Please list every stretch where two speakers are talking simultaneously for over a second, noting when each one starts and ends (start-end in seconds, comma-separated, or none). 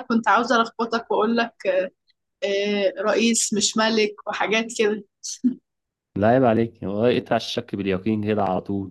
none